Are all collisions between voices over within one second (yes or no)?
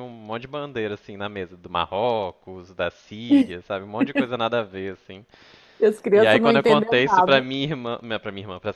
no